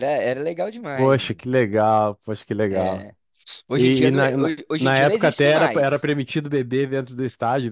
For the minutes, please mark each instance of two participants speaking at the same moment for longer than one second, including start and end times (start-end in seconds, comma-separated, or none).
3.7-6.1